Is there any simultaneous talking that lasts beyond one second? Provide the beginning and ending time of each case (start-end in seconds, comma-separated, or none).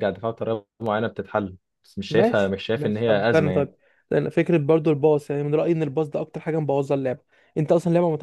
2.1-3.7